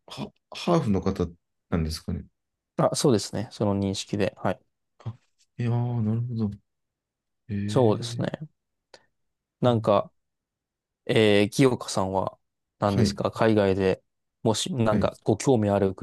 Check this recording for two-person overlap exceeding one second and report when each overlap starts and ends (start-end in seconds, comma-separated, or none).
none